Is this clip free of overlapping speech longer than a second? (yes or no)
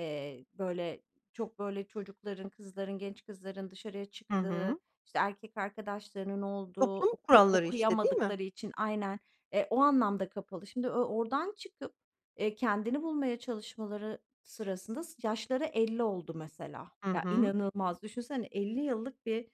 no